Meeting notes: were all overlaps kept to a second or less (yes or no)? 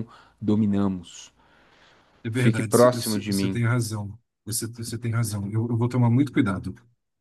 no